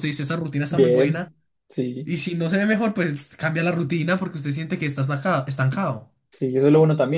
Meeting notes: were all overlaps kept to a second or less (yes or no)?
yes